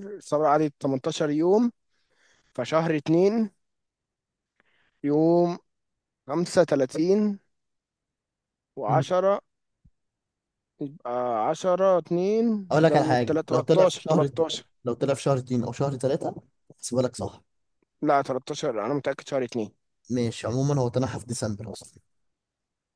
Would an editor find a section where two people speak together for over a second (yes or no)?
yes